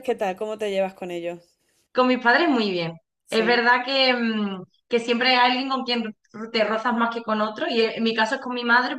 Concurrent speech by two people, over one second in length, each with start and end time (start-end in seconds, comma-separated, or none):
none